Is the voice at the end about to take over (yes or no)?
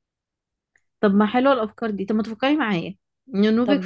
no